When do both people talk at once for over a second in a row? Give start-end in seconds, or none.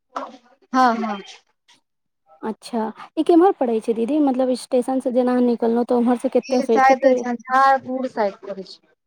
none